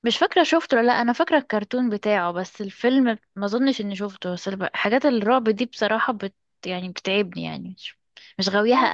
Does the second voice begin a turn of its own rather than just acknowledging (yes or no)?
yes